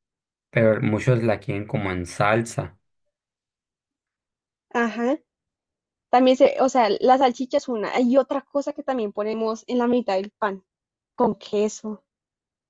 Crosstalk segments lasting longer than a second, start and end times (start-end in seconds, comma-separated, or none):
none